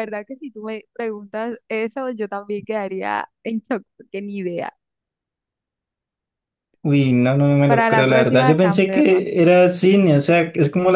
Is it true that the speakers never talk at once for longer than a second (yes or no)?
no